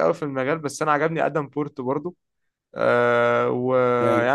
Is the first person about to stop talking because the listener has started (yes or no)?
no